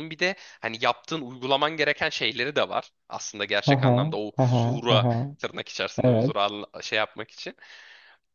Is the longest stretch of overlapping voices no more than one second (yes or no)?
no